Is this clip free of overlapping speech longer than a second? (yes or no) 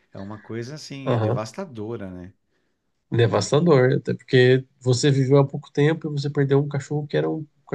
yes